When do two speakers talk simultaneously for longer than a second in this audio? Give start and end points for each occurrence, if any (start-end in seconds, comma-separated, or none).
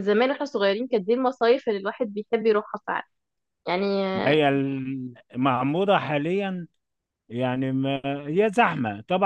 none